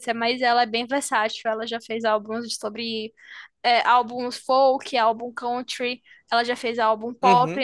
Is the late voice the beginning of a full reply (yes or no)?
no